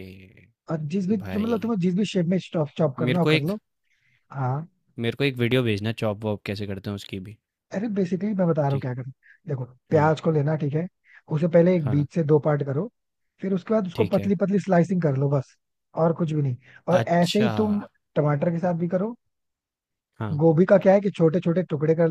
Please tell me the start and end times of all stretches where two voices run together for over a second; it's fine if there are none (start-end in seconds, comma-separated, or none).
none